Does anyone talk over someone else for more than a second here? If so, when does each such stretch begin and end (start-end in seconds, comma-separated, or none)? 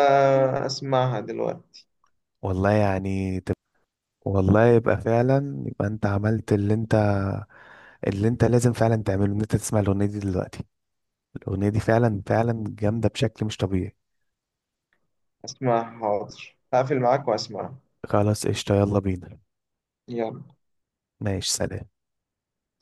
none